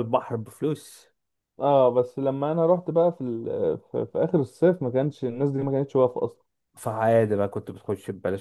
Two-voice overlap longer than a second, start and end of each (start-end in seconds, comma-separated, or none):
none